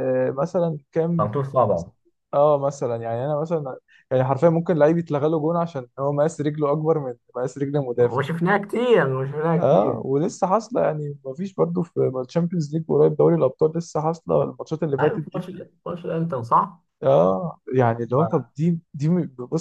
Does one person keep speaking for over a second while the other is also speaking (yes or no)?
no